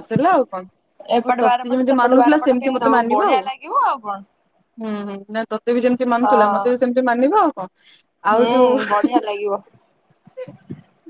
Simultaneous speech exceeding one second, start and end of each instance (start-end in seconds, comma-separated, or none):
1.2-3.4